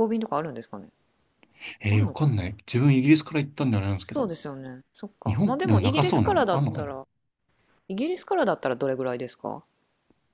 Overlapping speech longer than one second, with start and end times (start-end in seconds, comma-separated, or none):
5.2-6.9